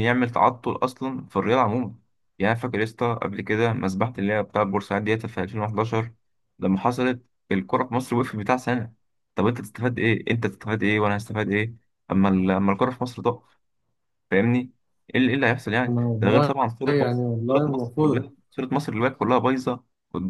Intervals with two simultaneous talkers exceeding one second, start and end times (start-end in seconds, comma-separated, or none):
15.9-18.3